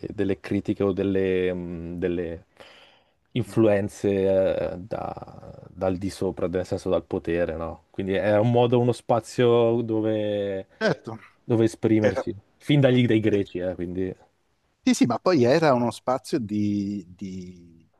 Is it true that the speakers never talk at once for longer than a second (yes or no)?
yes